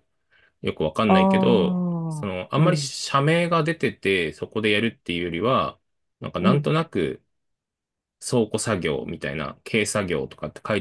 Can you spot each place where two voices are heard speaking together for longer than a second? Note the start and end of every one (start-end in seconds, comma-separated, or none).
1.1-2.9